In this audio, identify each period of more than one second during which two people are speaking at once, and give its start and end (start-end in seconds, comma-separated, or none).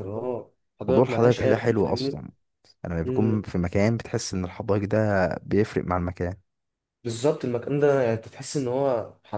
0.9-2.2